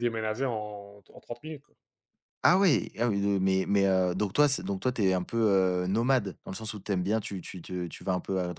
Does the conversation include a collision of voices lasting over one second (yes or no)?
no